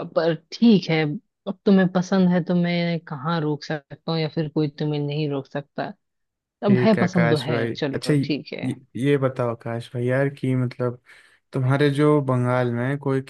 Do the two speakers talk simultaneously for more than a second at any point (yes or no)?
yes